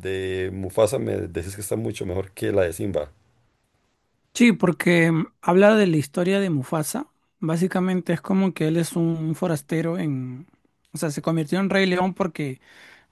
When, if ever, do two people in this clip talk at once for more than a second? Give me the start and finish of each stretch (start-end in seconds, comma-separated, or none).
none